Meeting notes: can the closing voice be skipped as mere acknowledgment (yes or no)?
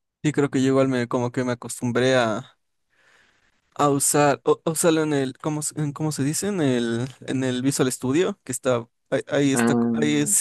yes